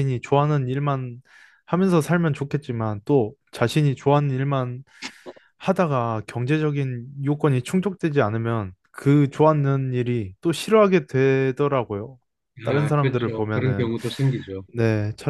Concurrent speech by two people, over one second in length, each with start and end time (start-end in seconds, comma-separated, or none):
12.7-13.9